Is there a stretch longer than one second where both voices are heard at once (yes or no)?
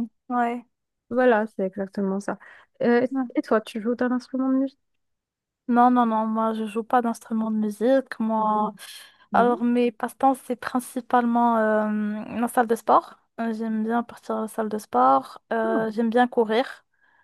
no